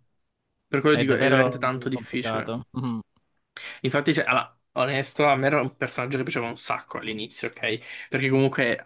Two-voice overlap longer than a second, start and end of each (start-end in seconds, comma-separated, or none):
0.9-2.6